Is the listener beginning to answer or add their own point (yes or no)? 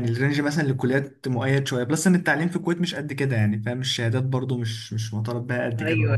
yes